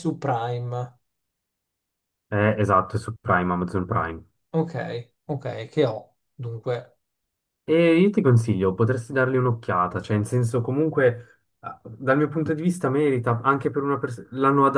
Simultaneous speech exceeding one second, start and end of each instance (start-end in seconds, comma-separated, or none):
none